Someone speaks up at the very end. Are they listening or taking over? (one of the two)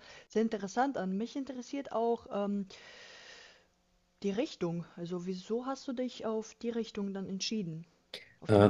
taking over